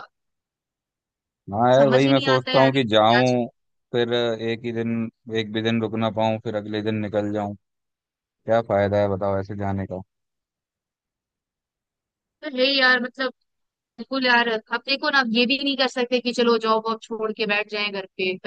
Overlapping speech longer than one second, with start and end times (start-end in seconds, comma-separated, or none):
1.8-3.4